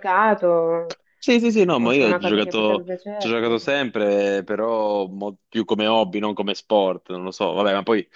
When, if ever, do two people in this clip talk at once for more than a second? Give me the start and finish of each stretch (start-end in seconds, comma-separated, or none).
1.8-3.5